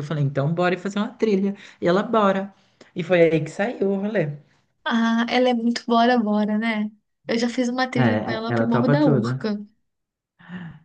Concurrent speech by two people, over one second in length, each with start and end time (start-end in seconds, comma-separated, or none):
7.9-9.5